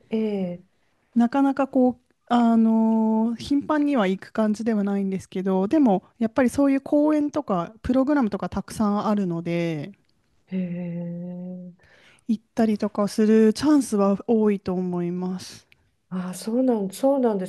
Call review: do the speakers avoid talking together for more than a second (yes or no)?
yes